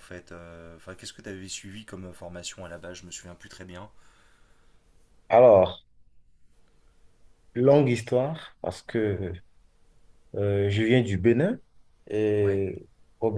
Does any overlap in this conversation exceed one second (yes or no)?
no